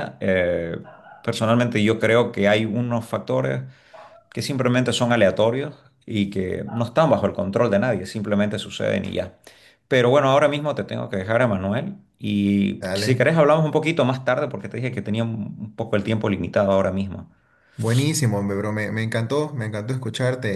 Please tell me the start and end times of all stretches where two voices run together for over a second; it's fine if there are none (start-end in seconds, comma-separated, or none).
none